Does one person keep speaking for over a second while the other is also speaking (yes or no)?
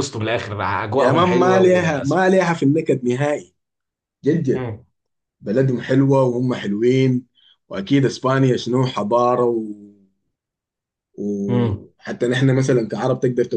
yes